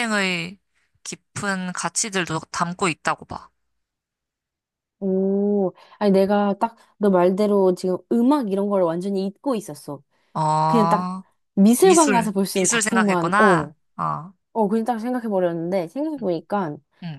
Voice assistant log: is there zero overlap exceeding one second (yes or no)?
no